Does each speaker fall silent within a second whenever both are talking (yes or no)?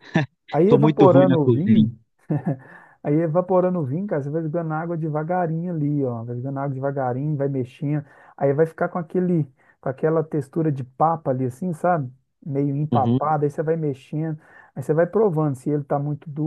no